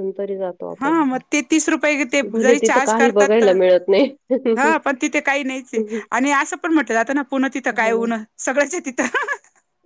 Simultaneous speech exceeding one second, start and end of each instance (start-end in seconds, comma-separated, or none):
2.2-4.0